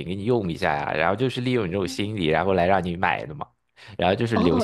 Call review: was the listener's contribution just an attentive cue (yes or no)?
no